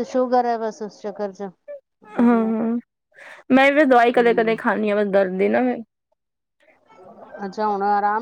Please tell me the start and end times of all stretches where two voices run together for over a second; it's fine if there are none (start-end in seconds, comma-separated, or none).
none